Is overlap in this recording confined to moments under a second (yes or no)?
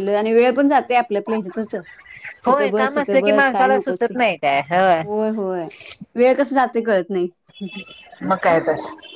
no